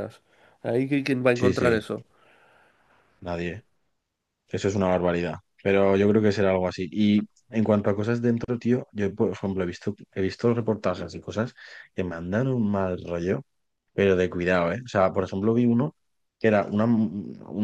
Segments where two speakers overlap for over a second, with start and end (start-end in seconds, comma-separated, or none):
none